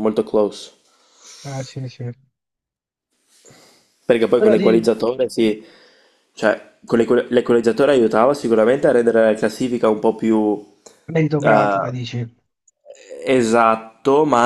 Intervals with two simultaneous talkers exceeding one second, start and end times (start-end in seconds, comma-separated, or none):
none